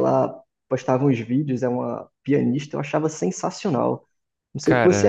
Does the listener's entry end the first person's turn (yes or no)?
no